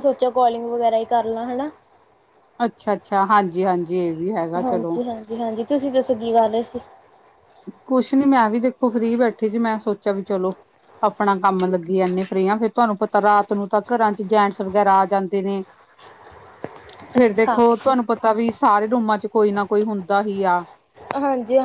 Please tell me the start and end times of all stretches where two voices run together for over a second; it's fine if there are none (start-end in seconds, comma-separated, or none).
none